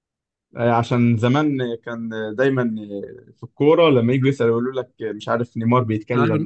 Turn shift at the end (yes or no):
no